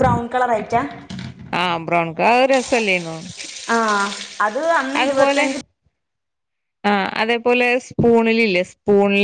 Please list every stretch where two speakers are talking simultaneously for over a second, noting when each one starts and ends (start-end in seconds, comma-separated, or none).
none